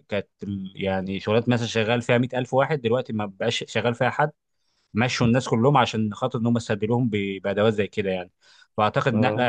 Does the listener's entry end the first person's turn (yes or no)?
no